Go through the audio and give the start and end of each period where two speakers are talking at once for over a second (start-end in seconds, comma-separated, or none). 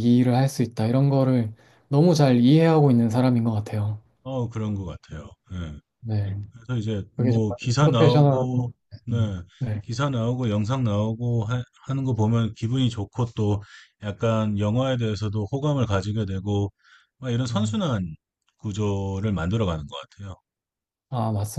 7.2-8.4